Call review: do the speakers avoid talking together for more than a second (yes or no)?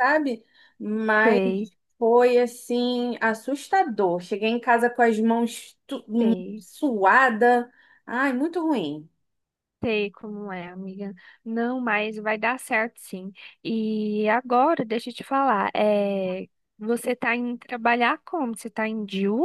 yes